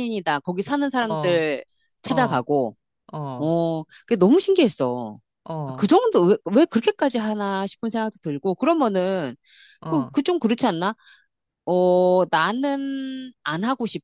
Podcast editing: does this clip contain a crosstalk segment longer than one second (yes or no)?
no